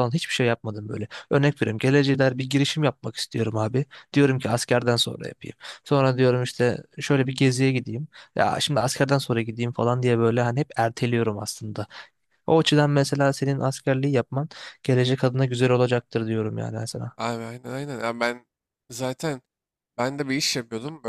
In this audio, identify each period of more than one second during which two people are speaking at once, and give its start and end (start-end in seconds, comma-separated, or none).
none